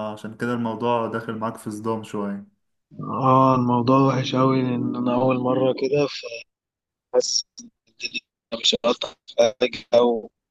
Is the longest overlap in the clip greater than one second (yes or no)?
no